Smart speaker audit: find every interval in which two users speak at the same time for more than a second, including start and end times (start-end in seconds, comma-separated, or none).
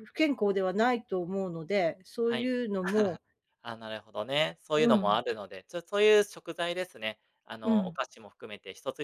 none